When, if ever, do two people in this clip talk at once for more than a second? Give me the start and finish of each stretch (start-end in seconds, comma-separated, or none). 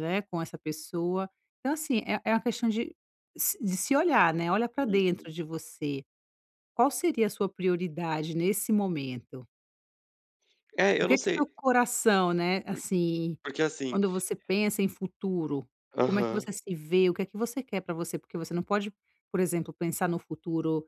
none